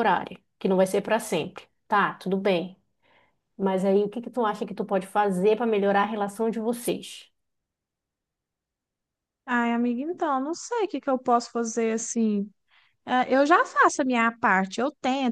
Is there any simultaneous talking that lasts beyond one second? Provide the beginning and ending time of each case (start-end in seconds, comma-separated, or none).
none